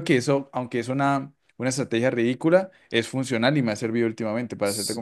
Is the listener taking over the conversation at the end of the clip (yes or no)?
yes